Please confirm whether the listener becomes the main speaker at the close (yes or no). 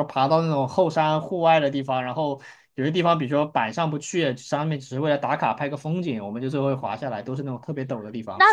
yes